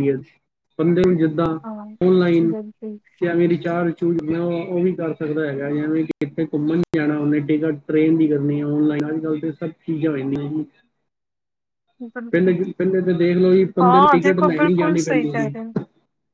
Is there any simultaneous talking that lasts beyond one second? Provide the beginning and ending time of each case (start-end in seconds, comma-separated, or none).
13.8-15.5